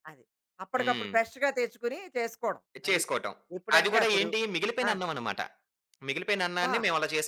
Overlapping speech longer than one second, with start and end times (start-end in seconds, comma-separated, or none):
none